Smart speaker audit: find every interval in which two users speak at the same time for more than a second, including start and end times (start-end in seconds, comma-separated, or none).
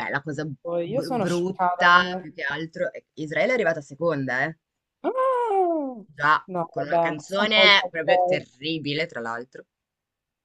0.6-2.3, 6.5-8.4